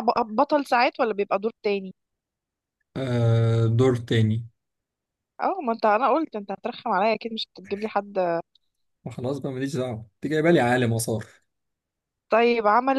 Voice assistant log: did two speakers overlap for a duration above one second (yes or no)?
no